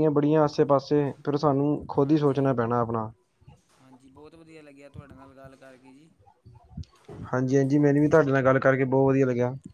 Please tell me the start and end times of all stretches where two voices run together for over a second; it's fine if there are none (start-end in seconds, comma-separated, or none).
none